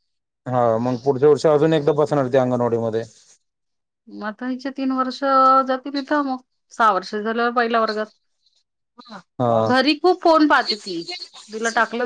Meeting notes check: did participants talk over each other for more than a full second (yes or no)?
no